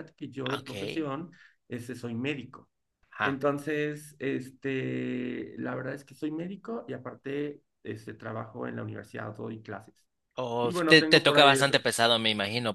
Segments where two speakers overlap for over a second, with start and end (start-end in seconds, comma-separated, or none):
10.6-11.9